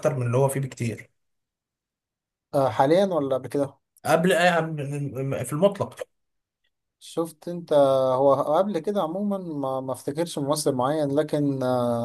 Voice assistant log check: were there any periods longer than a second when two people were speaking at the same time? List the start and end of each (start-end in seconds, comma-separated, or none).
none